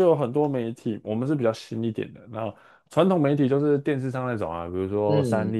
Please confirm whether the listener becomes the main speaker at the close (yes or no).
no